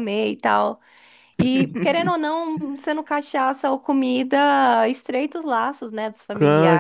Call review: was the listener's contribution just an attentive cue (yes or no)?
no